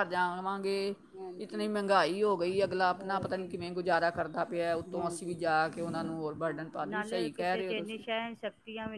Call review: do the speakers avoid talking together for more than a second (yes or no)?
no